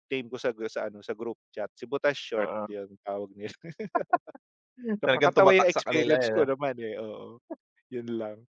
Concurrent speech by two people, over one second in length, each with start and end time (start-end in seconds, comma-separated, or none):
5.0-6.4